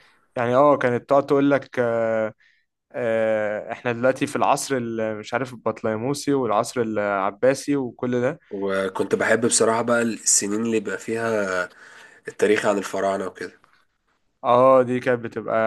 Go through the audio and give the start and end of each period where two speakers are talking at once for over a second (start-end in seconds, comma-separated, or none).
none